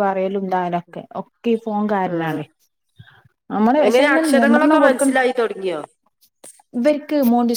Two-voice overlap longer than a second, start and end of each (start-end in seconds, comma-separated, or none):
3.9-5.2